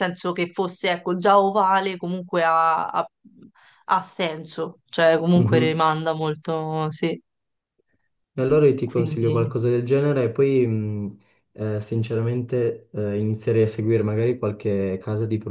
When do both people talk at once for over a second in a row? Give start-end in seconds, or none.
none